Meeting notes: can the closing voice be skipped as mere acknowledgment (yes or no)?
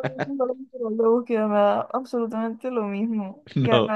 yes